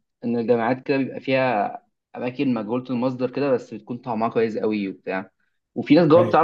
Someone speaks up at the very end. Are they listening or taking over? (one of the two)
listening